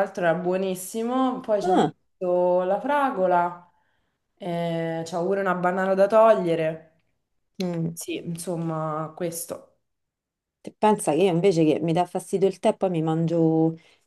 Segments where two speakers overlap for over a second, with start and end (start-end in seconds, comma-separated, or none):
none